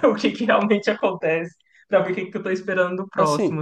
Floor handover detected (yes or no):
yes